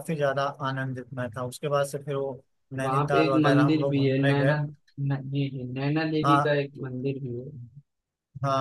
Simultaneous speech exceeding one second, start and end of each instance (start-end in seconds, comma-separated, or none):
2.8-4.5